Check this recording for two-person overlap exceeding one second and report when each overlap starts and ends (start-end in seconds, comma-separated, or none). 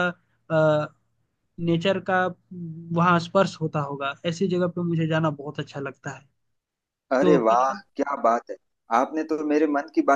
none